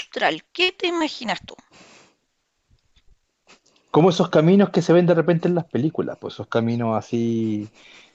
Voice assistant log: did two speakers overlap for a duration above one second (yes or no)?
no